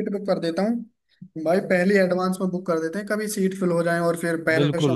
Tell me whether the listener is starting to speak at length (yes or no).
yes